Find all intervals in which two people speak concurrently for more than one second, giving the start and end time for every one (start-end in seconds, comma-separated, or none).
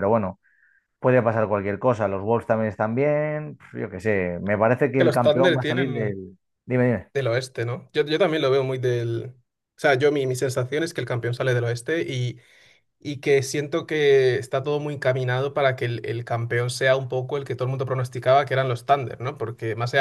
5.0-6.2